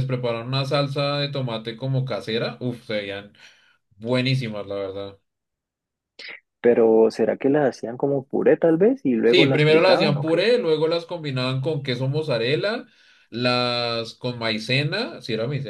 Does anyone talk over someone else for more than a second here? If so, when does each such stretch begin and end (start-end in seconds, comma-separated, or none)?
9.2-10.5